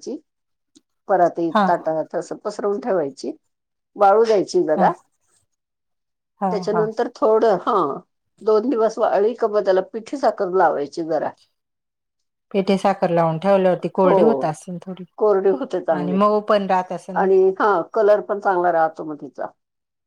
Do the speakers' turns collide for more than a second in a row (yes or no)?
no